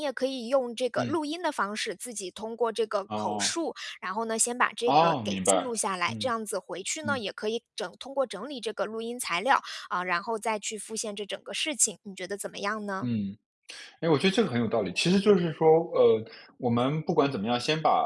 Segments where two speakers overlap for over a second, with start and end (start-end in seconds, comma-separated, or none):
4.9-6.3